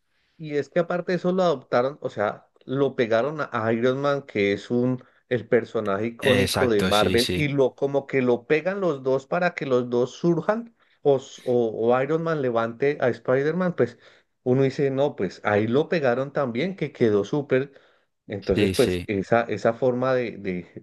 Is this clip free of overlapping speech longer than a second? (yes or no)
no